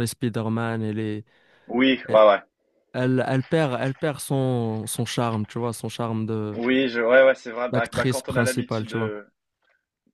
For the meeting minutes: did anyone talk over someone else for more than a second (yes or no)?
yes